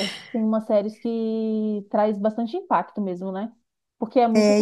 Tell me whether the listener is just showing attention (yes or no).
yes